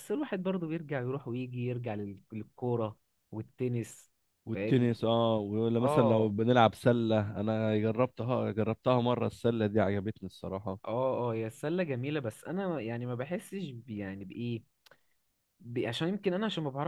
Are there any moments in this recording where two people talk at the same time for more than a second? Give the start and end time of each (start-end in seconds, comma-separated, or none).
none